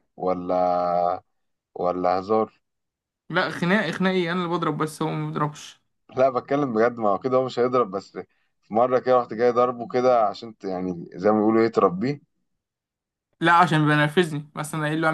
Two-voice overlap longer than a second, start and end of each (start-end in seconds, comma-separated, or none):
none